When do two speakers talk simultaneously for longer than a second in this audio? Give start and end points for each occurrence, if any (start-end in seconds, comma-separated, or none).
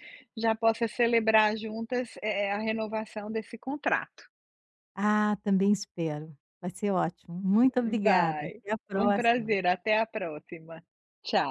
8.0-9.6